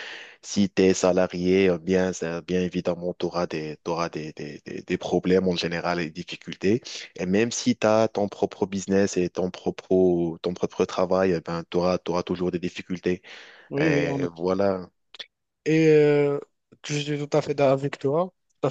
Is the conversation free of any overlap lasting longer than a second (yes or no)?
yes